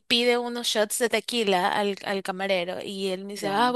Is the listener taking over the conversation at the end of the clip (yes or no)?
no